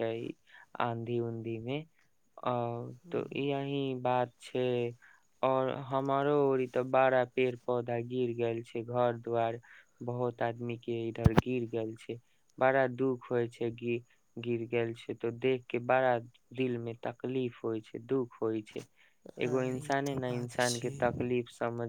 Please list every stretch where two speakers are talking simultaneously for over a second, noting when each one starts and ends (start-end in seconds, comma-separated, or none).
19.4-21.2